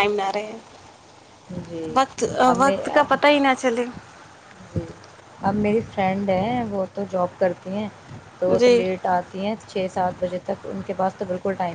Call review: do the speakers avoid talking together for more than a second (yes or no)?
yes